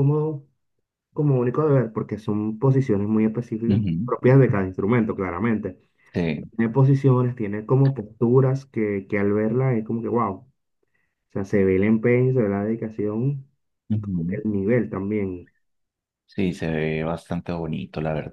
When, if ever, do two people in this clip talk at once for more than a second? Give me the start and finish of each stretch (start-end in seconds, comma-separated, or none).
none